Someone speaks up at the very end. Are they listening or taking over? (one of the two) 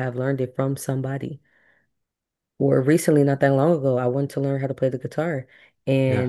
listening